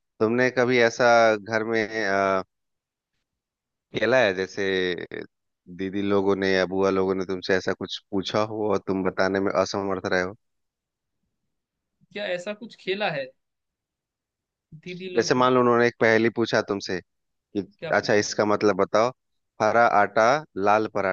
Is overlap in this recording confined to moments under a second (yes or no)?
yes